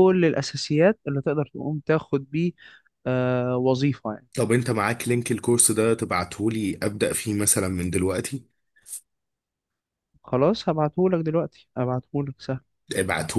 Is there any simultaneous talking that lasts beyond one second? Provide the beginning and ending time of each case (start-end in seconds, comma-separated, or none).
none